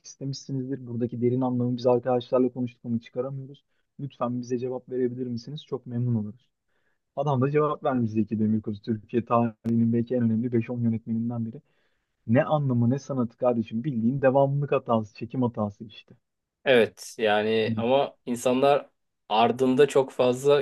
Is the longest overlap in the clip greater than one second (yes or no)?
no